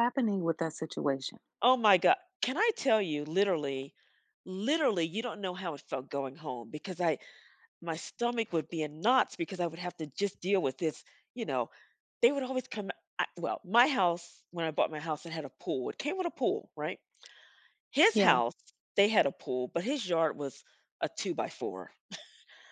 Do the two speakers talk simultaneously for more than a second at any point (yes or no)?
no